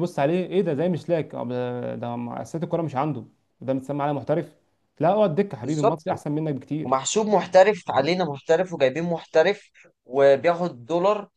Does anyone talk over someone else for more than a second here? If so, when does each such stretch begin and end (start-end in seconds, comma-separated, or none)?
none